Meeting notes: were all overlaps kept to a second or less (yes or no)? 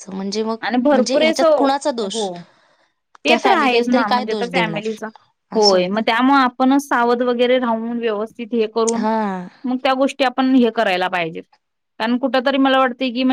no